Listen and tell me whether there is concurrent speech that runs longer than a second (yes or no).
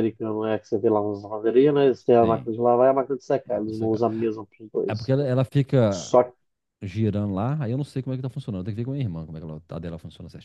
no